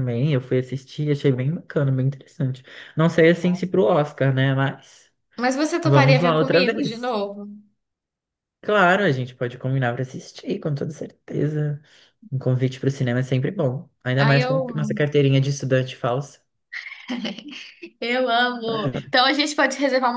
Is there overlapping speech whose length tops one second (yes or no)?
yes